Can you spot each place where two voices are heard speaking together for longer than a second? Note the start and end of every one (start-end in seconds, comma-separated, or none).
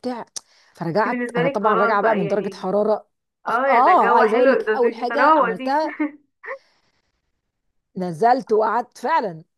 1.0-2.7, 3.5-5.8